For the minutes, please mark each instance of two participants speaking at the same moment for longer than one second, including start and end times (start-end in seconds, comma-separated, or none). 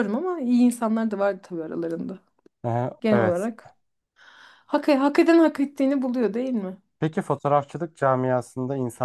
none